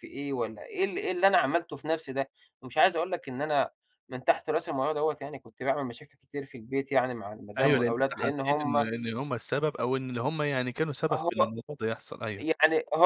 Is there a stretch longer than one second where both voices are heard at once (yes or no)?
yes